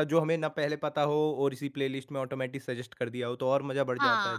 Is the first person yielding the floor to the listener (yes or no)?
yes